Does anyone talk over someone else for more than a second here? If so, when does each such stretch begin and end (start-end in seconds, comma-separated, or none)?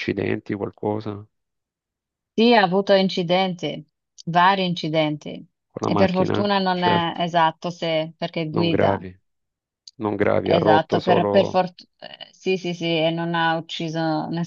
5.8-7.2, 10.4-11.6